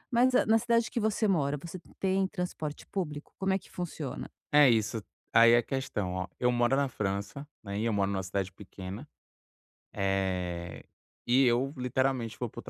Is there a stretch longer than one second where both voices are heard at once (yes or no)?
no